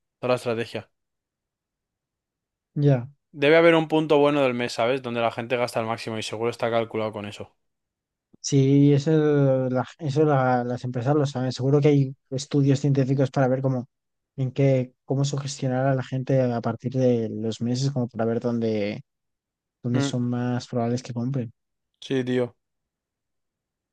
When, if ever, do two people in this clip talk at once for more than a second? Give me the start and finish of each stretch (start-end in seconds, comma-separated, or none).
none